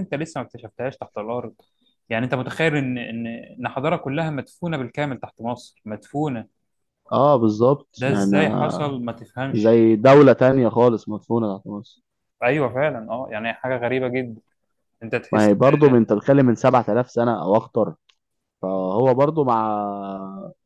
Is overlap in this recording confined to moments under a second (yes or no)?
yes